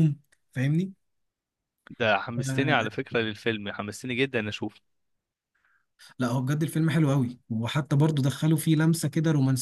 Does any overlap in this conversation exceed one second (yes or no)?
no